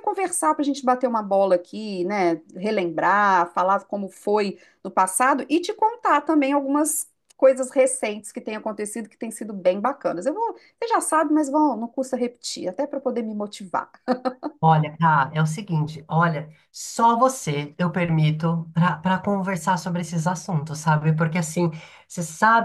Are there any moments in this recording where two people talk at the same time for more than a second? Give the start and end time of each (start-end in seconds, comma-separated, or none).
none